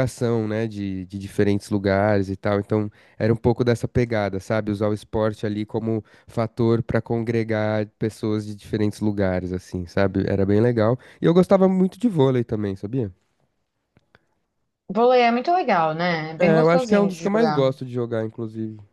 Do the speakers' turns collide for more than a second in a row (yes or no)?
yes